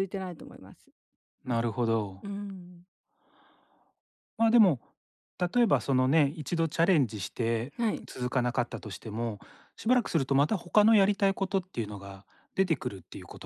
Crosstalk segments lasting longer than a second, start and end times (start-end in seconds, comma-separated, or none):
none